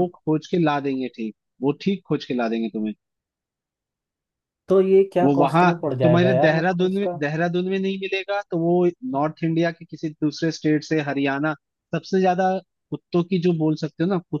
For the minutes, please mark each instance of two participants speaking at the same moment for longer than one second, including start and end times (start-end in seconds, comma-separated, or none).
5.2-7.1